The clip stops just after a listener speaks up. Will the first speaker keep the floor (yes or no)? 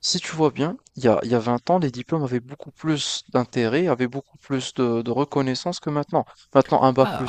no